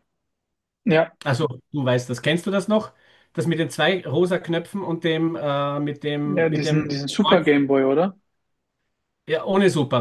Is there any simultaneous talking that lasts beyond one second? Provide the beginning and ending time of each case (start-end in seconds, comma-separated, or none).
6.2-7.5